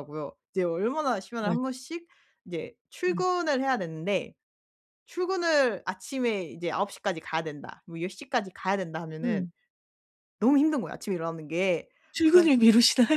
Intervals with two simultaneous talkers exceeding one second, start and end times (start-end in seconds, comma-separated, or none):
none